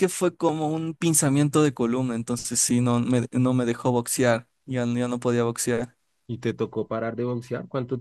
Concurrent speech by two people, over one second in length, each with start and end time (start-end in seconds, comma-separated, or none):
none